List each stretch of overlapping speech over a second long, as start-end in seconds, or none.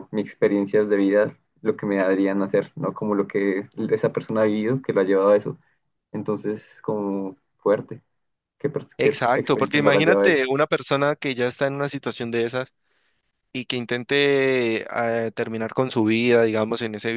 9.0-10.4